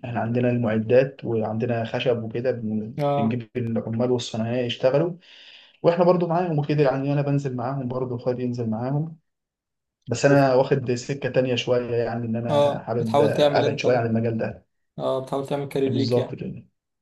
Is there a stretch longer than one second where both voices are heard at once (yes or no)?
yes